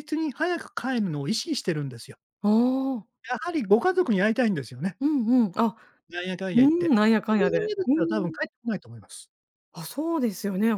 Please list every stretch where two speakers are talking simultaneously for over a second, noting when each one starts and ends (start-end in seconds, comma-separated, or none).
6.5-8.4